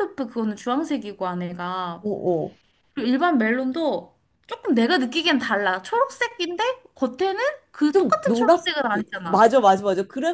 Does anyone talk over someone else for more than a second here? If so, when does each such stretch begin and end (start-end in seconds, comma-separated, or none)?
7.9-9.5